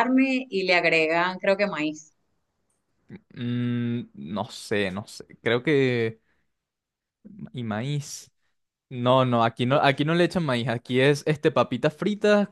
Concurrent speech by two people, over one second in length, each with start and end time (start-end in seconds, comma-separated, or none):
none